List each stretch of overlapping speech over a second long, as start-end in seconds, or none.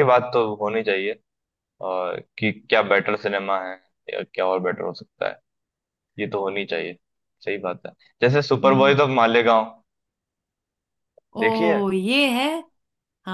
none